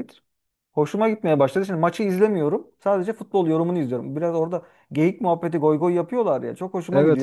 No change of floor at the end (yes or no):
yes